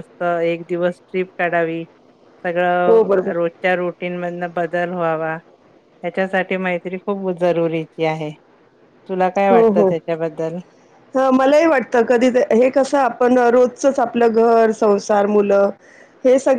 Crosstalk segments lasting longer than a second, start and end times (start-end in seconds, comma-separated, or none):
none